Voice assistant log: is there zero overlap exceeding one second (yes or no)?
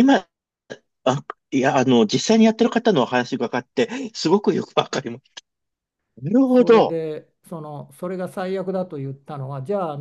yes